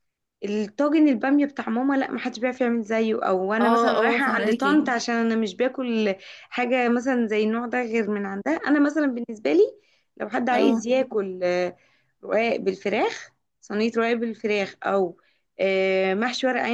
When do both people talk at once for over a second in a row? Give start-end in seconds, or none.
3.6-4.8